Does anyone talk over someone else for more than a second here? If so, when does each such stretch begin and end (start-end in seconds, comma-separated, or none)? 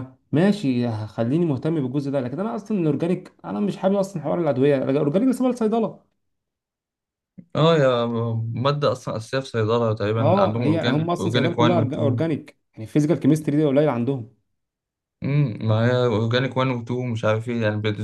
10.2-12.2